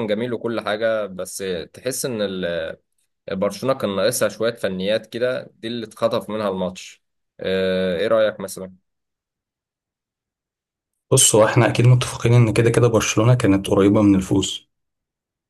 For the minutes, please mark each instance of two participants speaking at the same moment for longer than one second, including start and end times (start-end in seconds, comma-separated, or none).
none